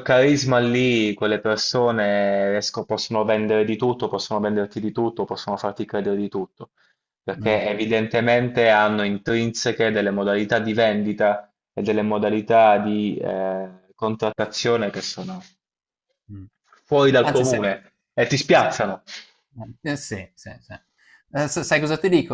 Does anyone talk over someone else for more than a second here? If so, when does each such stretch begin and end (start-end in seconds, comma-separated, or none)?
none